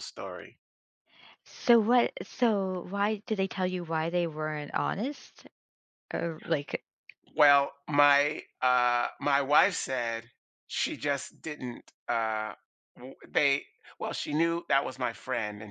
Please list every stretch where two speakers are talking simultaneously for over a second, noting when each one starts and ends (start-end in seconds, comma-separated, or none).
none